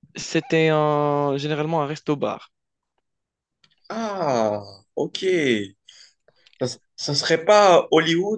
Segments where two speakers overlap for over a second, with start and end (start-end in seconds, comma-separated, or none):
none